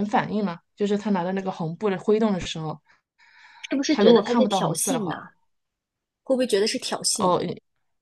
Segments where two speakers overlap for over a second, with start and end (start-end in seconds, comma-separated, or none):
3.9-5.2